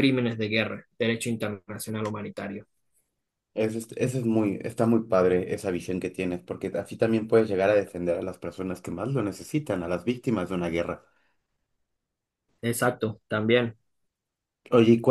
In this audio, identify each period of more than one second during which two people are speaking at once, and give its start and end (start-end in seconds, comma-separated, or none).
none